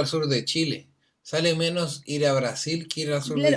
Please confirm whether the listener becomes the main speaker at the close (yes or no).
yes